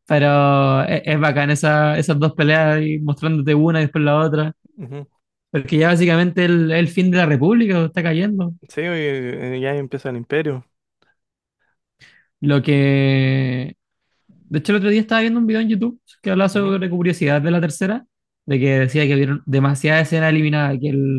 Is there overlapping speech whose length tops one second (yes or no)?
no